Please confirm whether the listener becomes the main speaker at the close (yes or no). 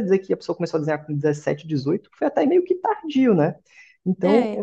no